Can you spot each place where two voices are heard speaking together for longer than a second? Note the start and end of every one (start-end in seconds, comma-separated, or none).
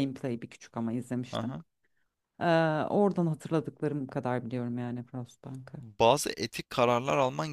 none